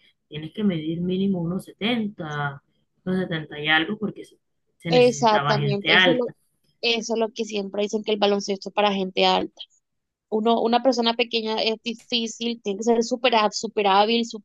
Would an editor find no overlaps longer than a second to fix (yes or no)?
no